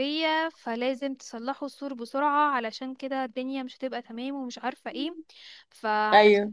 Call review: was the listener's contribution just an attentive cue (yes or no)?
yes